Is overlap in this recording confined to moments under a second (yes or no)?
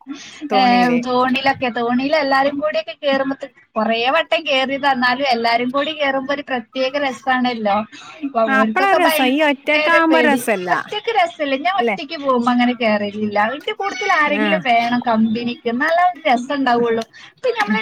no